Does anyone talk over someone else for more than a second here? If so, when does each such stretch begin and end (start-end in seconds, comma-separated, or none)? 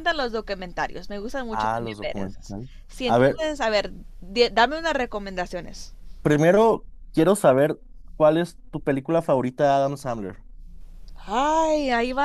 1.5-3.4